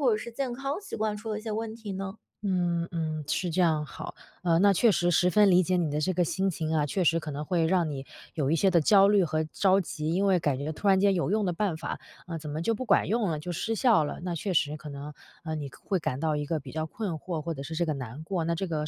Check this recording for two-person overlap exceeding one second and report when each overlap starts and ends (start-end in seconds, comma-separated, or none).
none